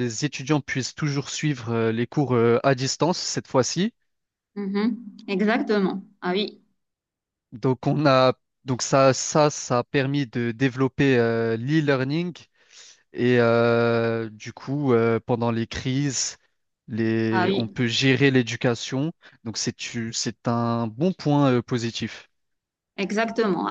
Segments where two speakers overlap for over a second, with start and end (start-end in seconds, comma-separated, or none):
none